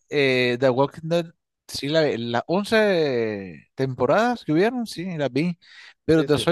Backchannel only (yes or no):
yes